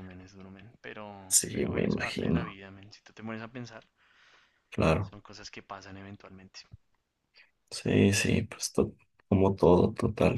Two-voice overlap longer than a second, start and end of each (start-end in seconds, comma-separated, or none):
1.3-2.6